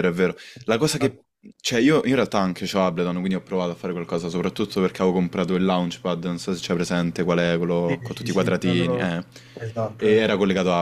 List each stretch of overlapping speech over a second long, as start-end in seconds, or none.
7.8-9.1